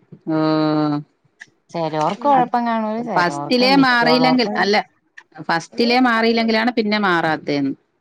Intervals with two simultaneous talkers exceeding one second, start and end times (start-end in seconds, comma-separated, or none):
3.2-4.5